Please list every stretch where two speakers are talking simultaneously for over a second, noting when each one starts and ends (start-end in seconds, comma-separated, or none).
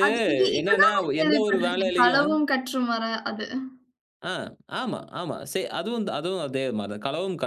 0.6-2.3